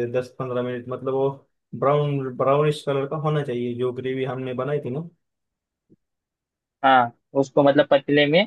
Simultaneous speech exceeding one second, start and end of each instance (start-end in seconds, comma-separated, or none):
none